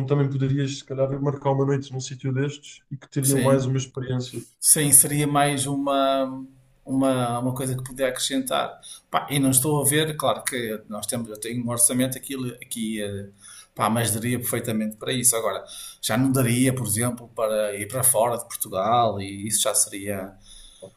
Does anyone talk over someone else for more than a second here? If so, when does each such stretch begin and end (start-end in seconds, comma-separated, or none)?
none